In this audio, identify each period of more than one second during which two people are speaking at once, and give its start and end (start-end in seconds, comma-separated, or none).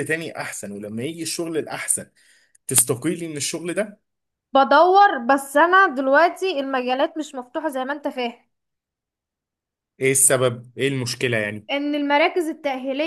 none